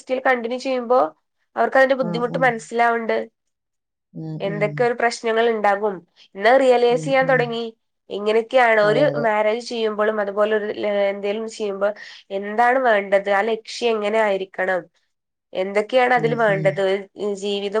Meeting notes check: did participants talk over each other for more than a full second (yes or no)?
no